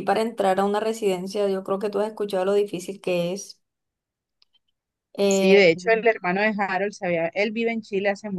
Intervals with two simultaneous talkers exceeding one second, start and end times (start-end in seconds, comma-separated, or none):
none